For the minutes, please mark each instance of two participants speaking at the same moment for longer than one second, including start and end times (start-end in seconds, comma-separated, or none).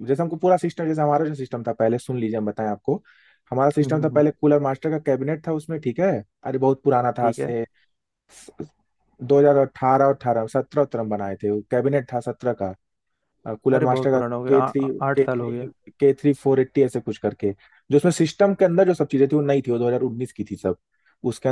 13.7-15.7